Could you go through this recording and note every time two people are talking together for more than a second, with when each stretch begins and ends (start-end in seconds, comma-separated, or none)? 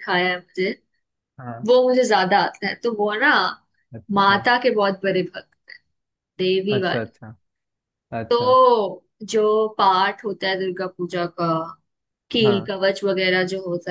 none